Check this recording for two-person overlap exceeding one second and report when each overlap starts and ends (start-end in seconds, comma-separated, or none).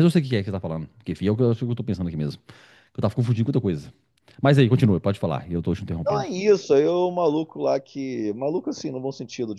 none